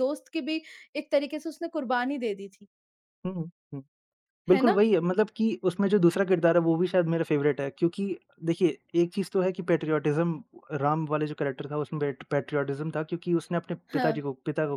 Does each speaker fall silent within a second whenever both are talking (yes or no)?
yes